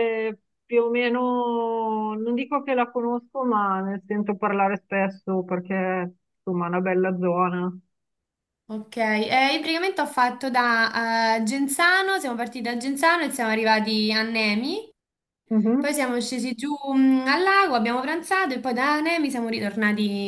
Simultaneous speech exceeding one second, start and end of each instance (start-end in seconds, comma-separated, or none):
none